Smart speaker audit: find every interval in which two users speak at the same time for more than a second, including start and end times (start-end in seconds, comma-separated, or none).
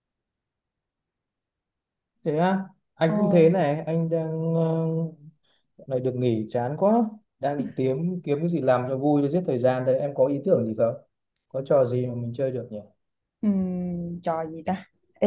none